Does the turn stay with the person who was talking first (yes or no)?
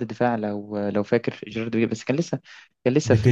no